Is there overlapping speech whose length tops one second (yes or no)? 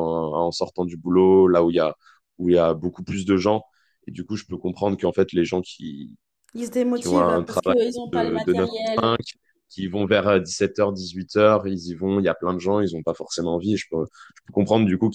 yes